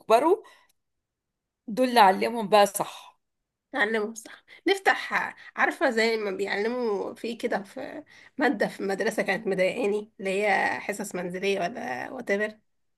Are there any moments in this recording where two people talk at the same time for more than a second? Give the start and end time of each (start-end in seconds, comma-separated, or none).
none